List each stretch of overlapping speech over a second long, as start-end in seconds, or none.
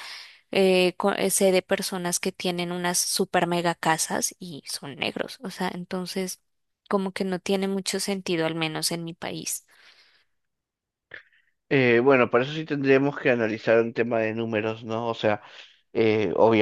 none